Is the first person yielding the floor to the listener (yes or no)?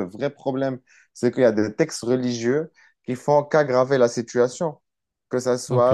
yes